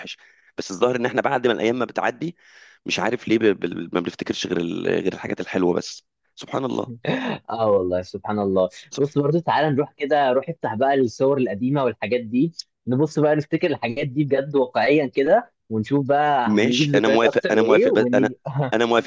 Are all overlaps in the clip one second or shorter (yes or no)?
no